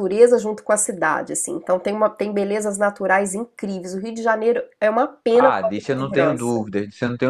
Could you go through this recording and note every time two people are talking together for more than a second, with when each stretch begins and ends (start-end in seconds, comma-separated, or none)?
5.3-6.6